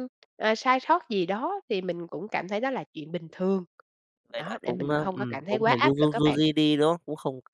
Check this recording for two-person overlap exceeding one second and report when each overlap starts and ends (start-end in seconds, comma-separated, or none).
4.3-6.4